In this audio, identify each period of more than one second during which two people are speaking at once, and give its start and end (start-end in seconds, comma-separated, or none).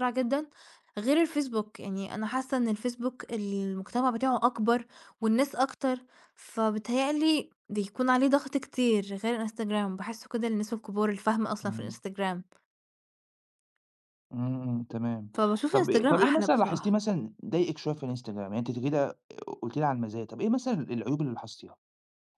15.7-17.0